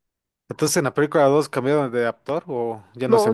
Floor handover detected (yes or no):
yes